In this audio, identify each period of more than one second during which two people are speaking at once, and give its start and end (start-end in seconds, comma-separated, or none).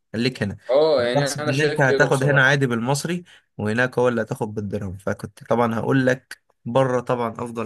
1.0-2.5